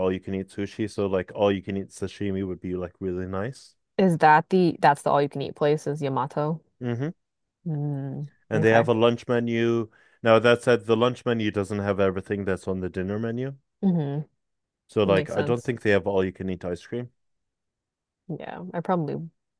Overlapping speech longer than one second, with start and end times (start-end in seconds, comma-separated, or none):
none